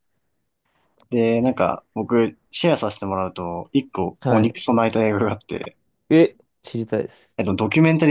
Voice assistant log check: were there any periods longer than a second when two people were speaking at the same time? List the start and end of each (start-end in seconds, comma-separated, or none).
none